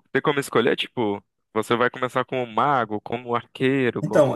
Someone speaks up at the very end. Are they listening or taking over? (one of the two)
taking over